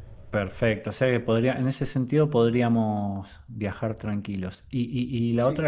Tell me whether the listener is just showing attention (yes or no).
yes